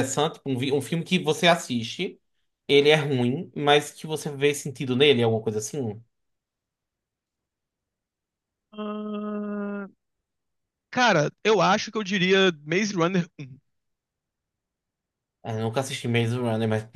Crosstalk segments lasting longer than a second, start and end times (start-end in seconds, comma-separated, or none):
none